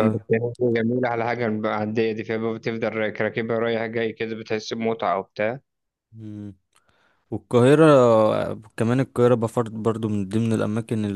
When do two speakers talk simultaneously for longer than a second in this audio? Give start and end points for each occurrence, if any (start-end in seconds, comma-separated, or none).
none